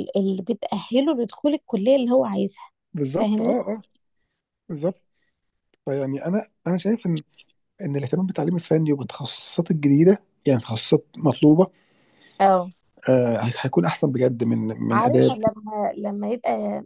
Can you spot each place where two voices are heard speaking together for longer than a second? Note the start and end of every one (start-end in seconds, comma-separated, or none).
none